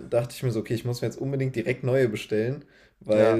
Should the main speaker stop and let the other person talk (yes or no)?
no